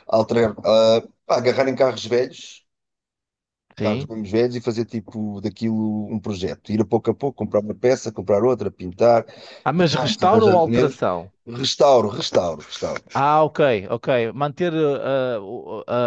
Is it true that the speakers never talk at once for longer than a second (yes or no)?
no